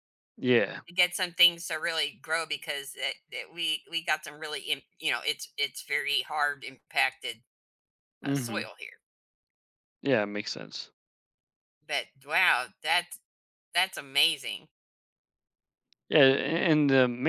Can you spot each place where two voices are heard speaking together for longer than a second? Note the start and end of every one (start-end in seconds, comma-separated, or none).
none